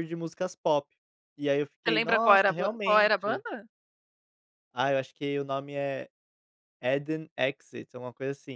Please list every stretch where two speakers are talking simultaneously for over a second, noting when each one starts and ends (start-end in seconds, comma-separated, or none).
1.9-3.4